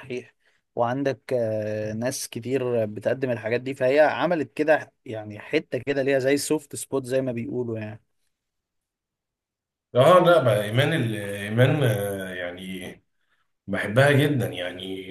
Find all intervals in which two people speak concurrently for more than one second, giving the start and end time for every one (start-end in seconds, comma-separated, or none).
none